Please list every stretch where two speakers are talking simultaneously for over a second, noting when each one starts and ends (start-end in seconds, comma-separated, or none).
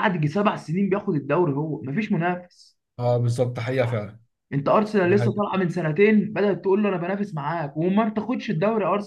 none